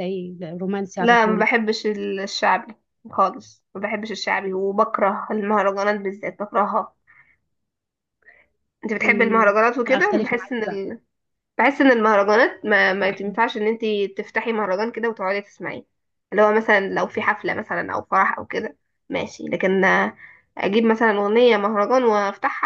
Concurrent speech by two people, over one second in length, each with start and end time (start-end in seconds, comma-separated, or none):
9.0-10.8